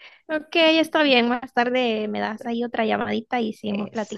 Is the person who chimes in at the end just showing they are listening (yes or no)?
no